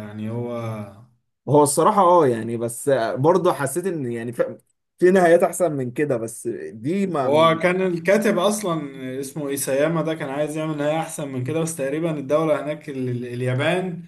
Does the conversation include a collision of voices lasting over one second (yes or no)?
no